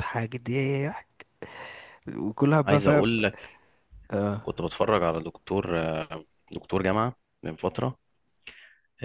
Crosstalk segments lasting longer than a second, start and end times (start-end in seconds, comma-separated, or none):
none